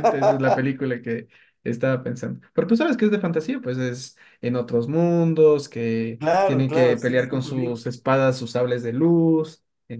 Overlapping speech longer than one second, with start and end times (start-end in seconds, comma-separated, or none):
6.2-7.8